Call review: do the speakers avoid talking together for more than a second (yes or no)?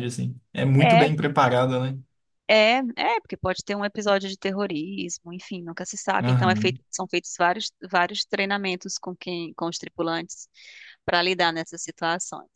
yes